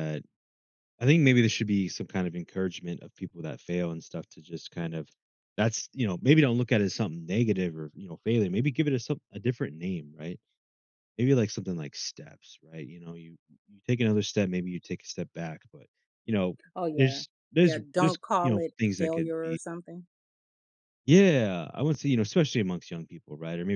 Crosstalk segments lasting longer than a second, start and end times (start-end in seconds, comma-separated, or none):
16.9-19.6